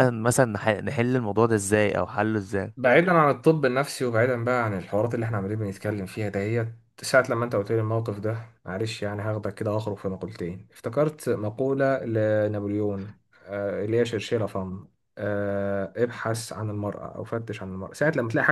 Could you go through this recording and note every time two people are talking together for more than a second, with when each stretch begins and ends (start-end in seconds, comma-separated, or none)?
none